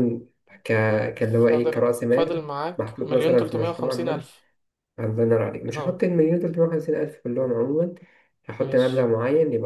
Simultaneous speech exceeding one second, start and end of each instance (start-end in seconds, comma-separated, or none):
1.5-4.2